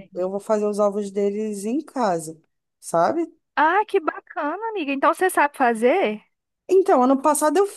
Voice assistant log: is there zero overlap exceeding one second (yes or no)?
yes